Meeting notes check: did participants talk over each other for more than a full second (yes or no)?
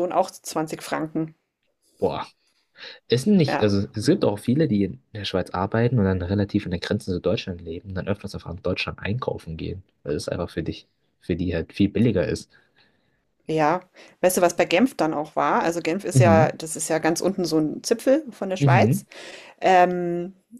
no